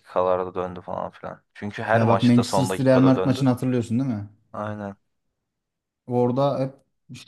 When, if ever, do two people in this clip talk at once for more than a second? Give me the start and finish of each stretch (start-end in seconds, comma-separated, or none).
1.9-3.5